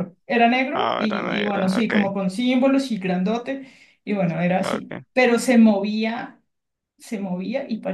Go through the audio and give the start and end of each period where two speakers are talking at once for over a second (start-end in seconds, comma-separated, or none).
0.7-1.9